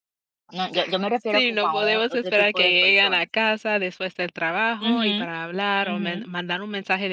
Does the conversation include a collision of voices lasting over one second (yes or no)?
yes